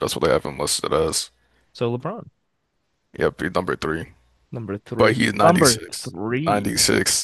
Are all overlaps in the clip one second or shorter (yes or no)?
no